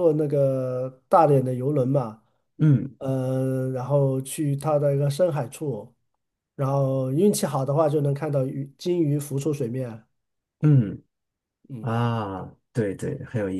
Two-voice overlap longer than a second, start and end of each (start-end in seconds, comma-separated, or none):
none